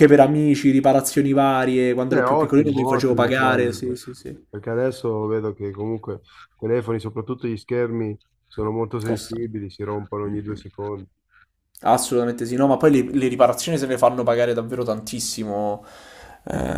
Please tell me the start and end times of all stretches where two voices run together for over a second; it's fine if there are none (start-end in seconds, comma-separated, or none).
2.1-3.7